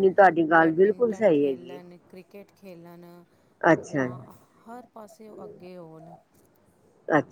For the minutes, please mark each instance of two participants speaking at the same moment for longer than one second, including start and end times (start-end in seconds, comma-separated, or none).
0.6-1.8